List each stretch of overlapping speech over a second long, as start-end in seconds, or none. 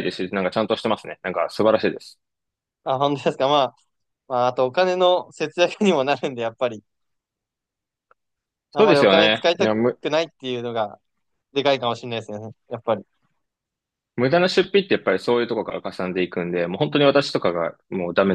8.7-10.0